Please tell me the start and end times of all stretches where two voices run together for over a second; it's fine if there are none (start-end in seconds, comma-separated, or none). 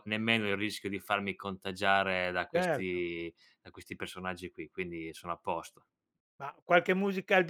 none